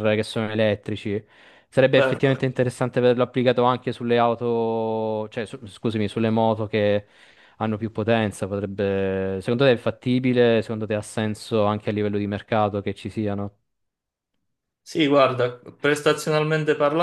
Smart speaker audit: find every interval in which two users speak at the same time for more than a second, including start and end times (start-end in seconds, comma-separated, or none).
none